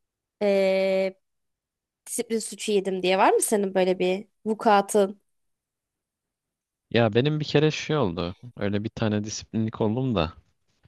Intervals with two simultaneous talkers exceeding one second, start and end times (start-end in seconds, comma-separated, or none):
none